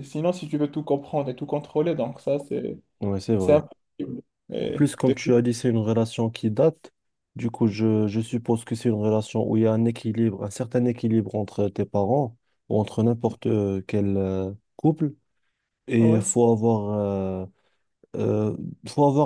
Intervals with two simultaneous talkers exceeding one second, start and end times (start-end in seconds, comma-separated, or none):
none